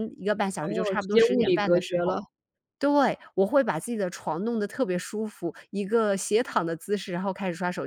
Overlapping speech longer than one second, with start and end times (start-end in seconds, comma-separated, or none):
0.6-2.2